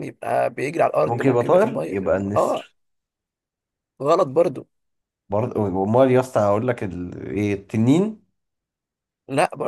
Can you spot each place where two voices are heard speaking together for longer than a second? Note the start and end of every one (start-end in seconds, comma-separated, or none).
1.0-2.7